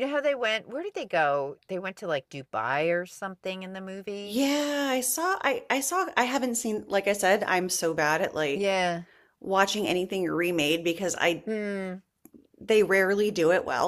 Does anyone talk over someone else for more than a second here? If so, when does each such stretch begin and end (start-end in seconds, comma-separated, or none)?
none